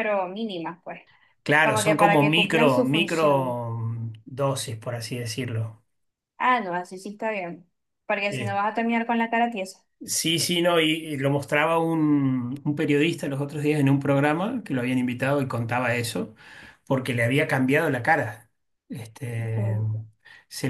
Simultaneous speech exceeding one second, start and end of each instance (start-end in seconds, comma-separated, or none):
1.6-3.6